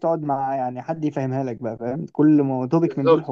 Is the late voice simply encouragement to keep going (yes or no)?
yes